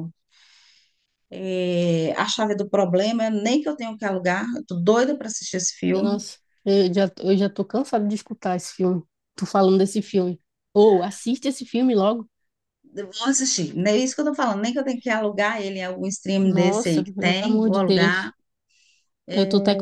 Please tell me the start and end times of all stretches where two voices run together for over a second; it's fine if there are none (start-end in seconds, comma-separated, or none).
16.4-18.3